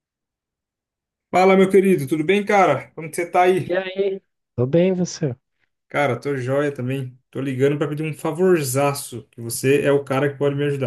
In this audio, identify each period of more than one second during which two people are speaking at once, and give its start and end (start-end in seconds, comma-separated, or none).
none